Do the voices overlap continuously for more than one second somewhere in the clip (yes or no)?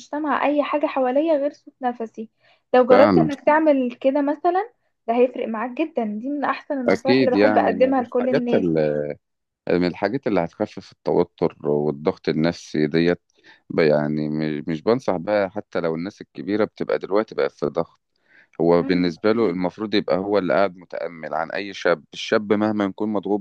yes